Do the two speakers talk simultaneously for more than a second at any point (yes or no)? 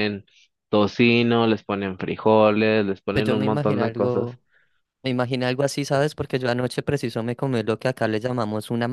yes